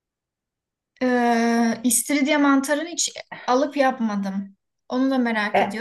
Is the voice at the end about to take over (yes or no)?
no